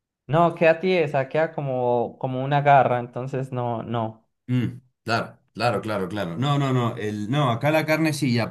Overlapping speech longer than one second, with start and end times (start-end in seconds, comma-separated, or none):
none